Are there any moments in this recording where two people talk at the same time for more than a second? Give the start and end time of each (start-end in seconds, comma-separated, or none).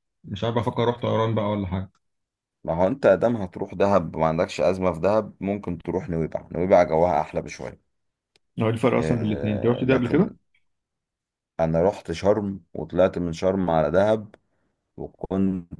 8.9-10.3